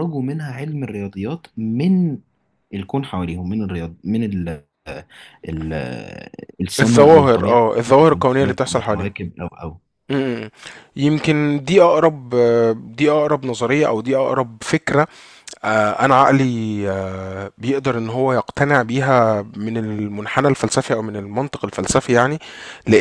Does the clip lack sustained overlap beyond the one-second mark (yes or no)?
no